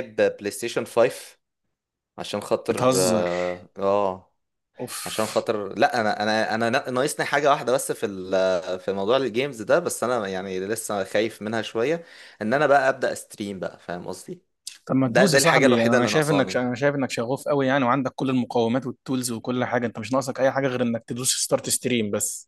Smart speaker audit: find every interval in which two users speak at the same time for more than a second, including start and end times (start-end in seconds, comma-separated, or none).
15.1-16.6